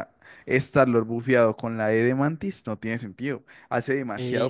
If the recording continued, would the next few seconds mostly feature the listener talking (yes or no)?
yes